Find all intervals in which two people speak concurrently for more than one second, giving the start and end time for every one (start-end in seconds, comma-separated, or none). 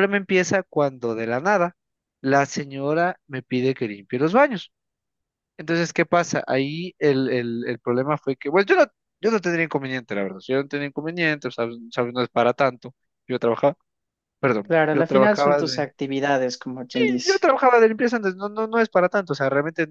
14.6-15.9